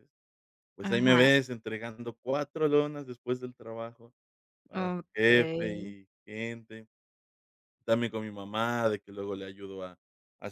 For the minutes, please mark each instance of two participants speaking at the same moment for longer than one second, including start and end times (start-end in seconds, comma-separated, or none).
4.7-6.0